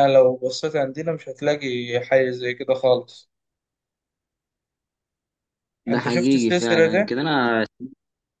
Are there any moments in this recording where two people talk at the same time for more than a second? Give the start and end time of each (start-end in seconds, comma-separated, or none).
5.9-7.1